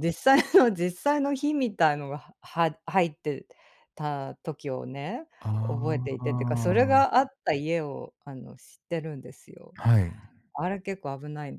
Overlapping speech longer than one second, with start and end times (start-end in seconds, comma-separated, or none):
5.7-7.1